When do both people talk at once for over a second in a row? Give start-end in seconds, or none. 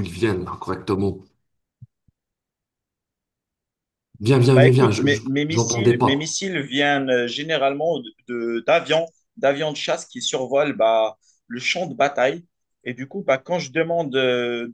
4.5-6.4